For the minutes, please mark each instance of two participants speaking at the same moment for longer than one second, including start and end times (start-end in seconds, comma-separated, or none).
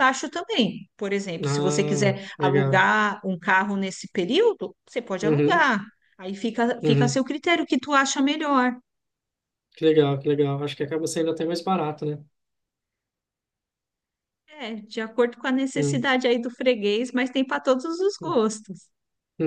1.4-2.9